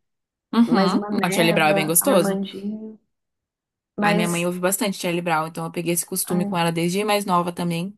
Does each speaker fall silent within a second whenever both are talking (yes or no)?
no